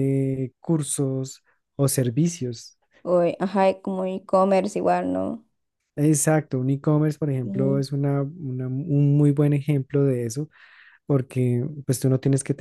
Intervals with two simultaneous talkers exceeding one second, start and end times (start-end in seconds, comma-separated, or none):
none